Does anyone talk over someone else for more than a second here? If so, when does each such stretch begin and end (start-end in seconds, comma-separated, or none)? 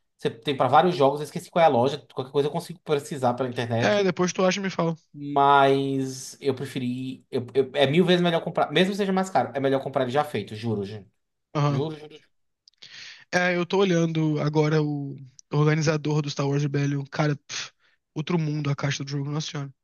none